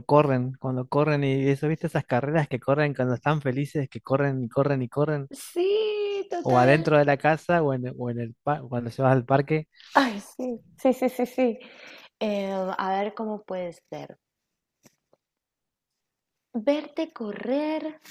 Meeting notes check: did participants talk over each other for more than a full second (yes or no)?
no